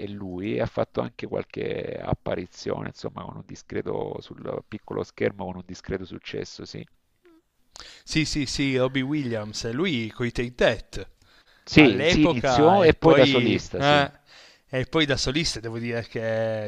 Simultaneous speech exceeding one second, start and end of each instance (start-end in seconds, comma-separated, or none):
11.7-14.1